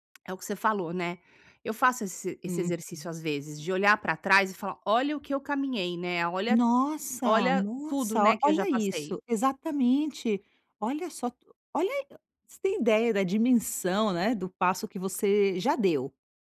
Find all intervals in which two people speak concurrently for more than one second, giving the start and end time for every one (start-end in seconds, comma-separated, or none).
7.2-9.2